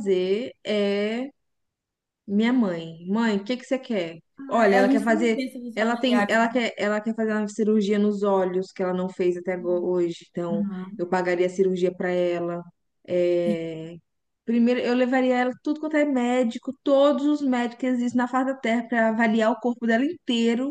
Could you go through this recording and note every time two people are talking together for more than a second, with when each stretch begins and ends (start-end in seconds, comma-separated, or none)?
4.4-6.4